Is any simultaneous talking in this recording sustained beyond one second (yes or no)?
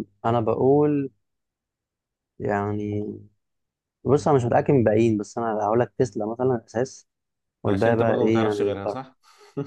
yes